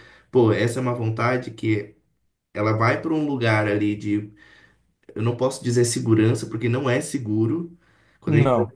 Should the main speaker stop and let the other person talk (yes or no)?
no